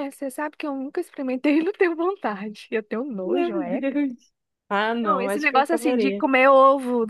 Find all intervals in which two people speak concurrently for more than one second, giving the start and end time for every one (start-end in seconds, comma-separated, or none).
5.0-6.2